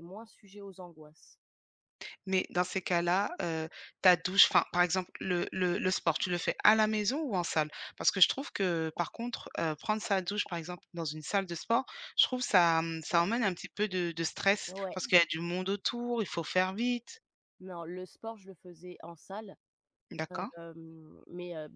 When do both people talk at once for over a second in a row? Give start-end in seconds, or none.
none